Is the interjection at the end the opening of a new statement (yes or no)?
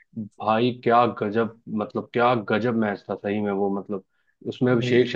no